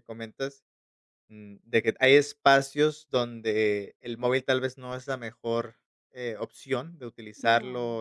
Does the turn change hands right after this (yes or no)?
no